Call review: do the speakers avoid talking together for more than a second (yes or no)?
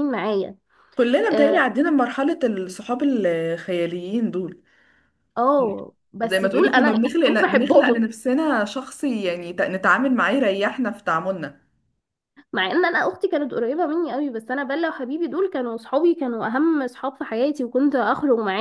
no